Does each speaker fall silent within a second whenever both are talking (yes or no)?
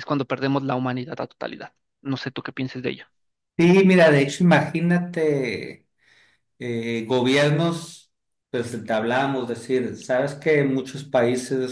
yes